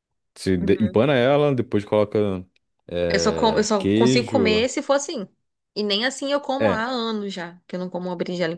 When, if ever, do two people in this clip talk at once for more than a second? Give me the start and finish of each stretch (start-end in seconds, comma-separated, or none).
3.1-4.7